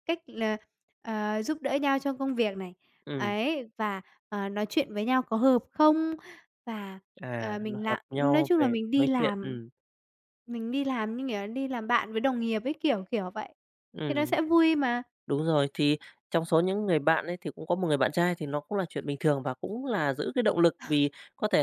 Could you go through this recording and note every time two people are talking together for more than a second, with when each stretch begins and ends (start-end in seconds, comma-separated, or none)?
7.4-9.6